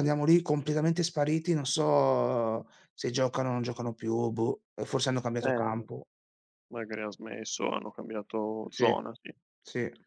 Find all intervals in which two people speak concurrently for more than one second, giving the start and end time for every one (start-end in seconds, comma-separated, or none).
none